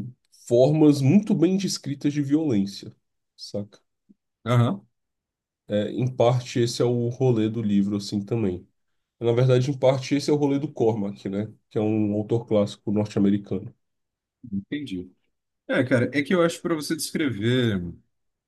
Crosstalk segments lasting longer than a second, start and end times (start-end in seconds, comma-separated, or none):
none